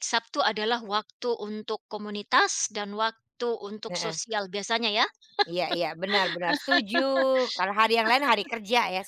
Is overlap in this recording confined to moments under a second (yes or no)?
yes